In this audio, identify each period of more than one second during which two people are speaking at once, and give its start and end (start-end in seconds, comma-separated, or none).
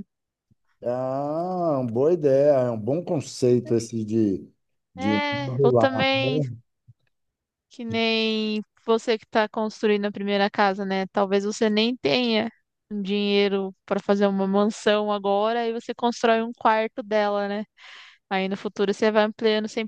5.0-6.4